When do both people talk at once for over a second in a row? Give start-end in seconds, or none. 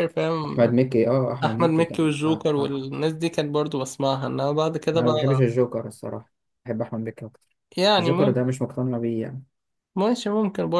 1.4-2.8